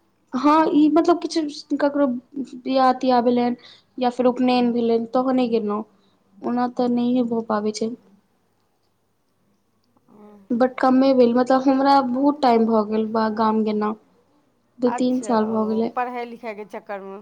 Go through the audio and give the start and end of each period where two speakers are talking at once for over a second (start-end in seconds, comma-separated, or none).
none